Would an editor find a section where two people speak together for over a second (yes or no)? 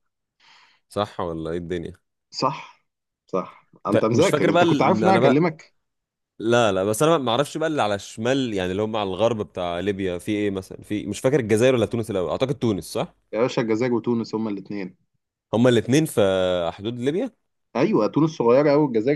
yes